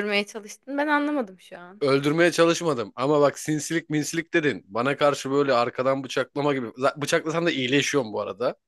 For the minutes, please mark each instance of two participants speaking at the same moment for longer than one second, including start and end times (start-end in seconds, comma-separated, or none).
none